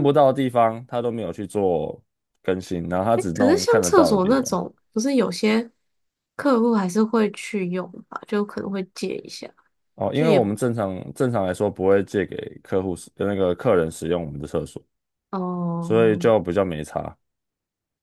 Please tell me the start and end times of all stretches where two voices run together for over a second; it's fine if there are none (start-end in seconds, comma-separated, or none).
3.1-4.5